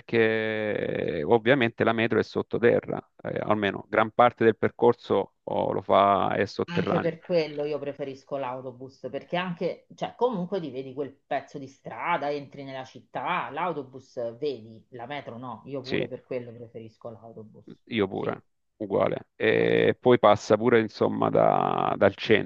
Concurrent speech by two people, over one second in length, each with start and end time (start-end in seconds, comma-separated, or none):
none